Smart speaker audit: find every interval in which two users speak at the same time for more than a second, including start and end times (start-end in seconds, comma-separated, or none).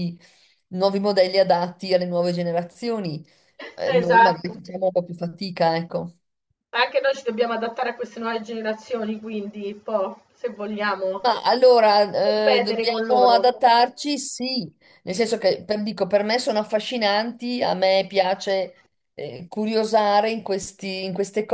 12.2-13.4